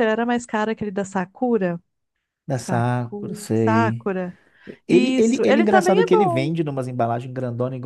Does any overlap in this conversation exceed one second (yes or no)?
yes